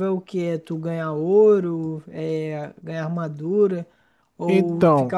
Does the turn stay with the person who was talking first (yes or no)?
yes